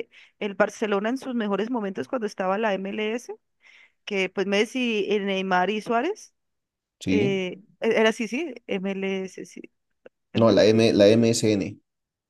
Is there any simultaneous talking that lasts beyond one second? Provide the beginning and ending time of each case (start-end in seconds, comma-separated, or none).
none